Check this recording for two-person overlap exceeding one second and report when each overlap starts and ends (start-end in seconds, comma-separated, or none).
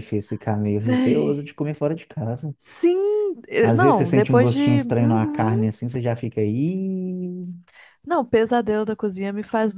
3.6-5.7